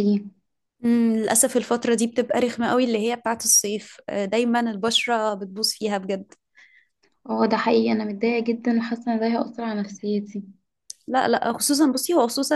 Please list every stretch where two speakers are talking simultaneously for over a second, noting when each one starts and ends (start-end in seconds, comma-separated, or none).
none